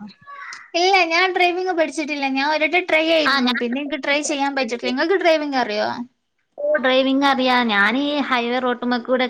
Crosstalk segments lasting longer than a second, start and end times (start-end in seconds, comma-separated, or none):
3.3-4.9